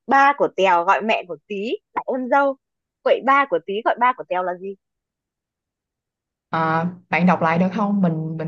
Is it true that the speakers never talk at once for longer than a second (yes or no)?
yes